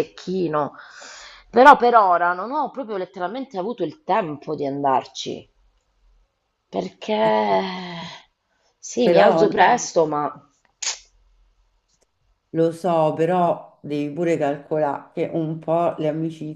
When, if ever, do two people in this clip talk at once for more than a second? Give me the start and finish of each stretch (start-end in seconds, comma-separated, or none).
none